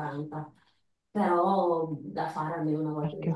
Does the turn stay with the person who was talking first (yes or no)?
yes